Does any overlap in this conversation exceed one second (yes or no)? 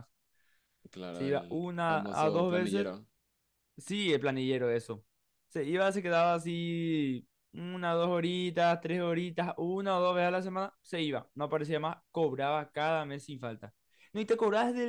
yes